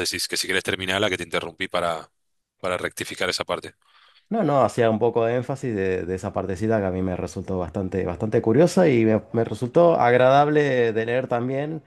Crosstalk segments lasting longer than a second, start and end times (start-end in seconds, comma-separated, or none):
none